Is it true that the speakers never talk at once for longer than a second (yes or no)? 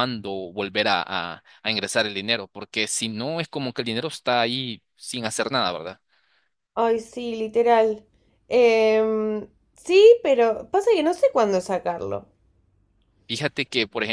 yes